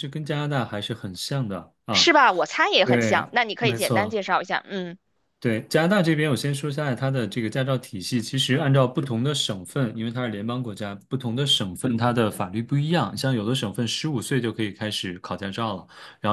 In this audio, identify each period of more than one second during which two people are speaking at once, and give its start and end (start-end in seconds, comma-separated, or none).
2.9-4.2